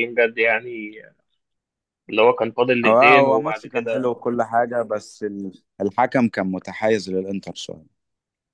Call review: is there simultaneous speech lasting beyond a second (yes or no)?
yes